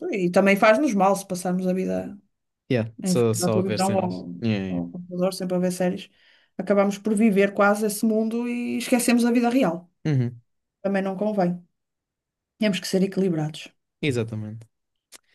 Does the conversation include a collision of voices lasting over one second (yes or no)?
yes